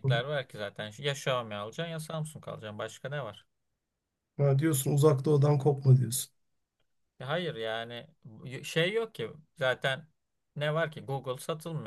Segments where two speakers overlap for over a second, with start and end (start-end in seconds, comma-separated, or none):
none